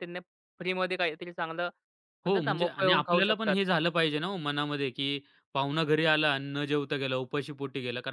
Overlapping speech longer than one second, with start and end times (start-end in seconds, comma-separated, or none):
2.3-3.6